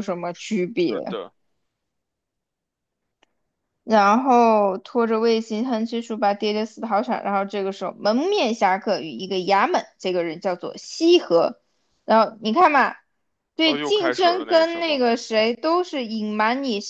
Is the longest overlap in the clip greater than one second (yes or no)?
yes